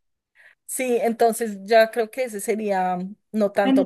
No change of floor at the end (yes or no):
no